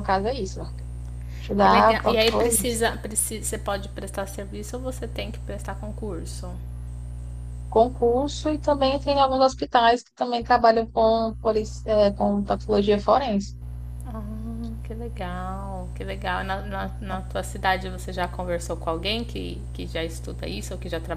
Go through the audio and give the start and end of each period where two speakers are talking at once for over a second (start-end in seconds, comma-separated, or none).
1.6-2.8